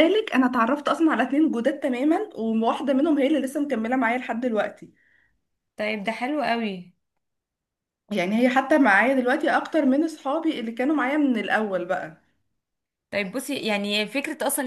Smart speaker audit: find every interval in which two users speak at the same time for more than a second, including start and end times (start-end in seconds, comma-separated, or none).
none